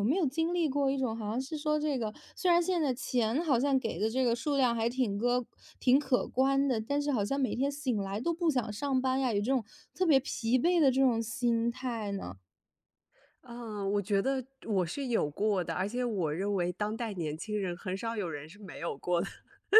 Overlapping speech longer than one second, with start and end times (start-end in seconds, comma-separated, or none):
none